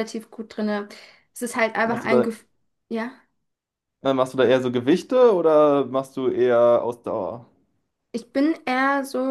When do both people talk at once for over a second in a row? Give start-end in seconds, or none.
none